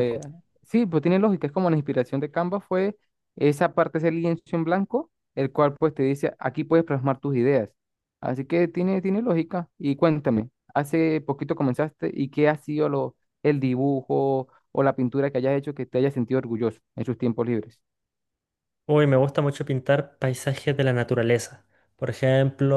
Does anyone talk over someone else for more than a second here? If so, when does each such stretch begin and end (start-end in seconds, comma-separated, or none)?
none